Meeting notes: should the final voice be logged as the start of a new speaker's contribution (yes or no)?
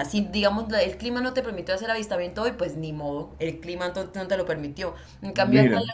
no